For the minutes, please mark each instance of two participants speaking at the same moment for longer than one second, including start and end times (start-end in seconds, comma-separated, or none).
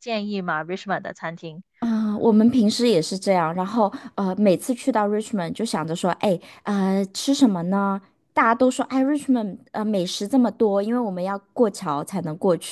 none